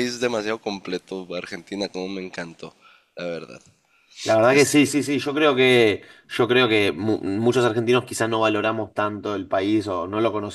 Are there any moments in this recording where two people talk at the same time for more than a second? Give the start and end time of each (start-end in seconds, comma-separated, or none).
none